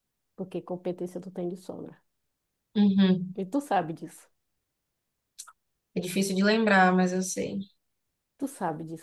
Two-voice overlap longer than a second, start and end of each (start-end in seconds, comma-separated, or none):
none